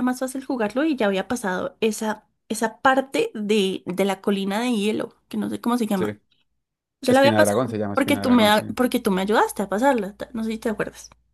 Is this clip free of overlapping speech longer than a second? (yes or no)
no